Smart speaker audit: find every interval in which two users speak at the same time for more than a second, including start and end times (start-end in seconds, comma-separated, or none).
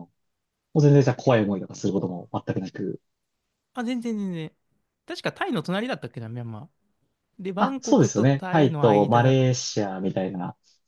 7.6-9.4